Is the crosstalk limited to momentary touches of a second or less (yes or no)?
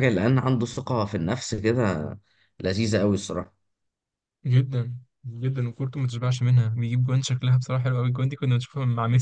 yes